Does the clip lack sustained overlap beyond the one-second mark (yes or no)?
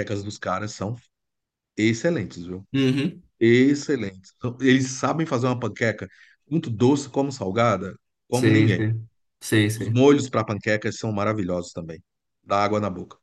yes